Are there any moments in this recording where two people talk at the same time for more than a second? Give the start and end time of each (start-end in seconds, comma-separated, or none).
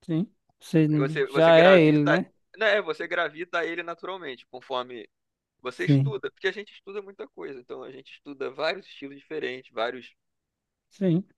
1.0-2.2